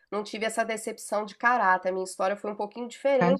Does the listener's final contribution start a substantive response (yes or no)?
no